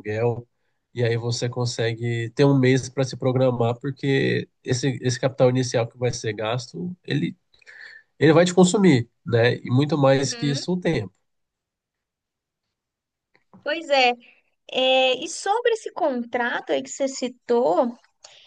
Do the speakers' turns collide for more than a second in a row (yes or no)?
no